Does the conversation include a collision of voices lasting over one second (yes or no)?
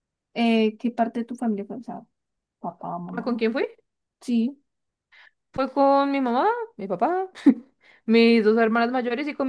no